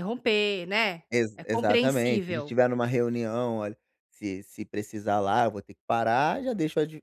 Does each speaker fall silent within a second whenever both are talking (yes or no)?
no